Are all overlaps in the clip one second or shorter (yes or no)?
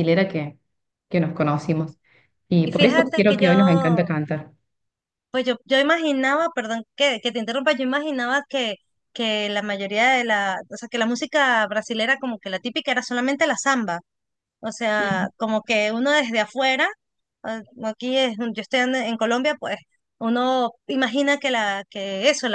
no